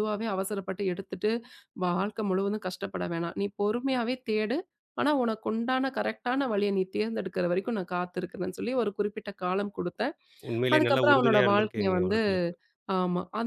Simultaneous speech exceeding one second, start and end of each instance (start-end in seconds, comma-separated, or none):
10.7-12.2